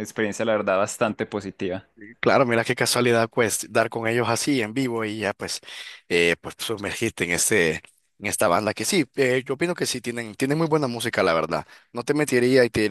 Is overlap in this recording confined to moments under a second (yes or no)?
yes